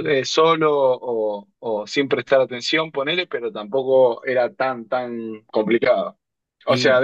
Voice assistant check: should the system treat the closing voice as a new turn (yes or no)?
no